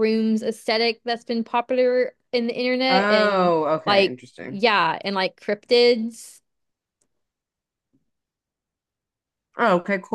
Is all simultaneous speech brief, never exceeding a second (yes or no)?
no